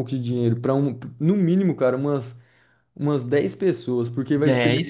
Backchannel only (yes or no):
no